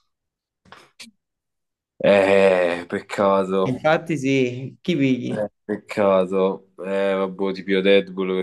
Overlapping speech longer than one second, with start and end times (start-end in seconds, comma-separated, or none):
none